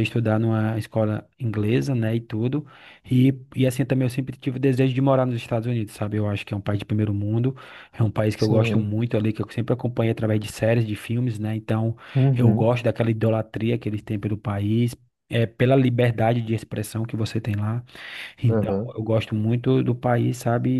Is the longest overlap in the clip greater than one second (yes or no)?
no